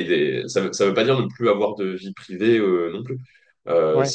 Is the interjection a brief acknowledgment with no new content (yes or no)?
yes